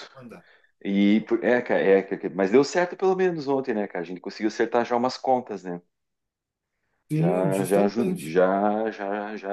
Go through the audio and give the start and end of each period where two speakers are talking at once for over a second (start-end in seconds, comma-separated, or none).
7.1-8.4